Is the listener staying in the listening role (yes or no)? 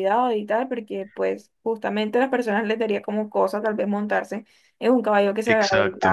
yes